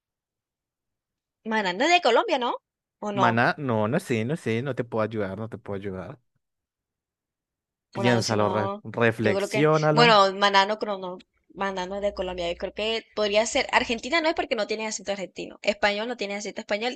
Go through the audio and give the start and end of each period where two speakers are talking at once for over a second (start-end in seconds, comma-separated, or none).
7.9-10.2